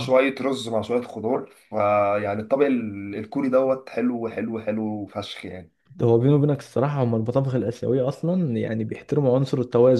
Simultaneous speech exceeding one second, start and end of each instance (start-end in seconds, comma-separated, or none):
none